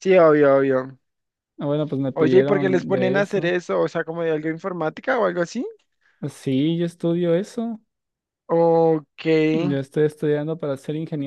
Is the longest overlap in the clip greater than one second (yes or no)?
yes